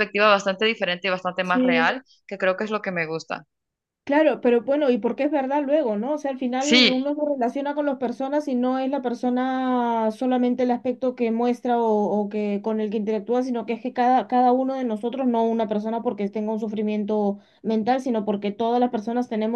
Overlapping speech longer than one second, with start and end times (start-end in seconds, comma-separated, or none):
none